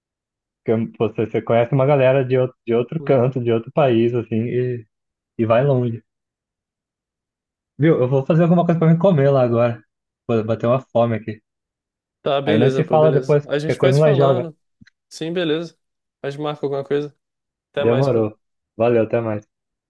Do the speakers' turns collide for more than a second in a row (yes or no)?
yes